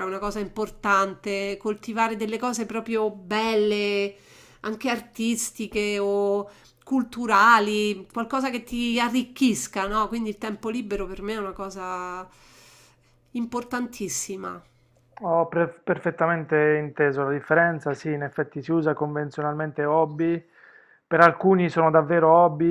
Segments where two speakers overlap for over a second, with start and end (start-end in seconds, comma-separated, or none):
none